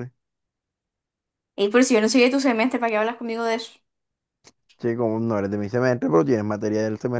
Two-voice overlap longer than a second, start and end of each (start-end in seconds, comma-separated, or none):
none